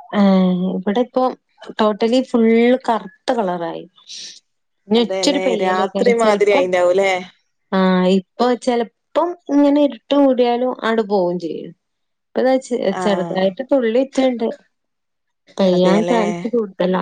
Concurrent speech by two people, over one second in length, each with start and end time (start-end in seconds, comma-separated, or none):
5.0-6.6